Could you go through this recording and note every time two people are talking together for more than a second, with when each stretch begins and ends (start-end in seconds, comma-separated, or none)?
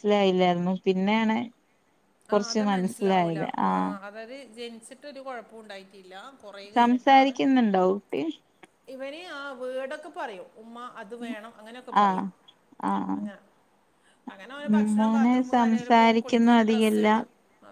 15.0-17.1